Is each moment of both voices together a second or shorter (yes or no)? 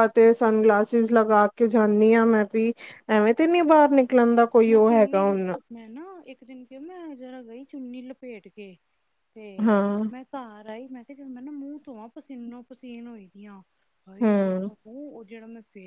yes